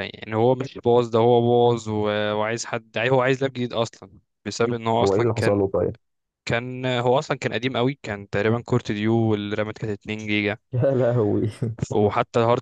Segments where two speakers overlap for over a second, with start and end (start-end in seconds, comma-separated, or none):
none